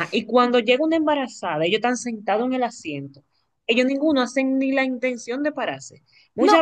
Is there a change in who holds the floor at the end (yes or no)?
no